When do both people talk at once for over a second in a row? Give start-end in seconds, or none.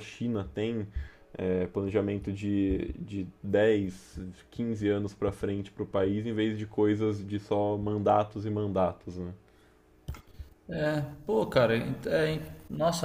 none